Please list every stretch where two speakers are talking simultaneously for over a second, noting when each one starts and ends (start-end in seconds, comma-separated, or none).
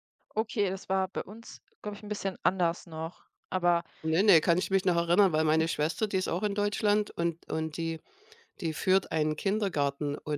none